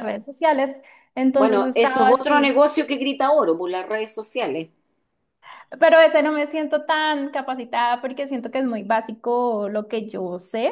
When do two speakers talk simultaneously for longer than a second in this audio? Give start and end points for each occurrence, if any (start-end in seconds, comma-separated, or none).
1.4-2.6